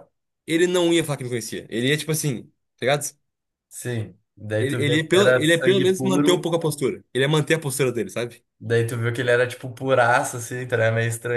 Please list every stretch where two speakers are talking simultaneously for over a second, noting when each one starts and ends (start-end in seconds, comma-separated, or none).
4.6-6.5